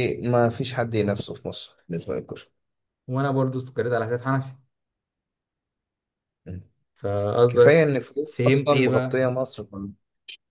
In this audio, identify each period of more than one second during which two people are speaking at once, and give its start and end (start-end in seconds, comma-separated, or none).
7.5-9.2